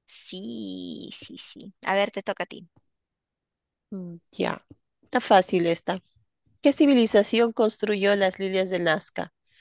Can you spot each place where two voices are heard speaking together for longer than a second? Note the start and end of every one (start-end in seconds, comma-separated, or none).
none